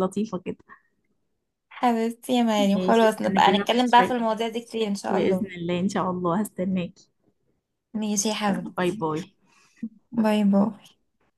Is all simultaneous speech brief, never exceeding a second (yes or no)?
no